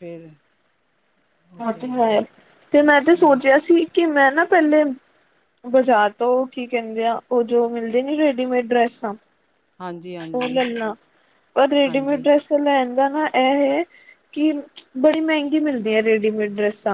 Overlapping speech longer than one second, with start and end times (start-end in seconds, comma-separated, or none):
none